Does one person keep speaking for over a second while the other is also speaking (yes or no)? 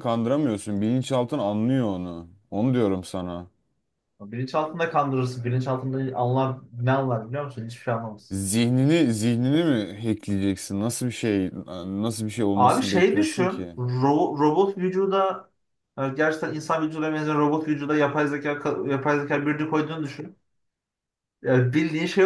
yes